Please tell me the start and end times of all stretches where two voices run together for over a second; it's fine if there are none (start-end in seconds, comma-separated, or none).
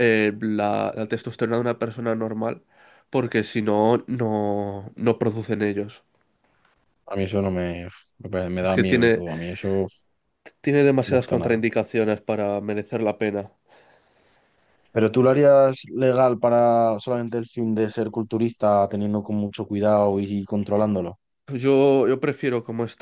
none